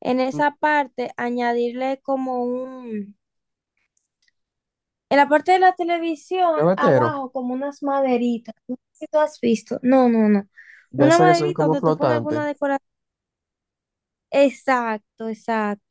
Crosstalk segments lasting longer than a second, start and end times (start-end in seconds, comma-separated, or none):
10.9-12.4